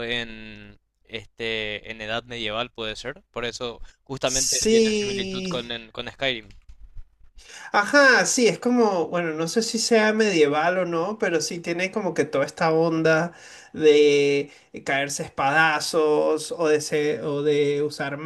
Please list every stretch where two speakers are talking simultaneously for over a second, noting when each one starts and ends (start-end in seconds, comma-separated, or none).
4.2-5.6